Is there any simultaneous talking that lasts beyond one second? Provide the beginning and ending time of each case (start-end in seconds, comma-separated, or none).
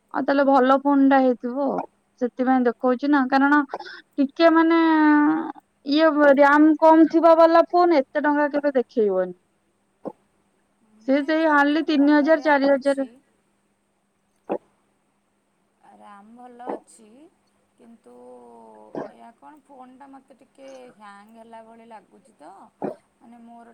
11.1-13.1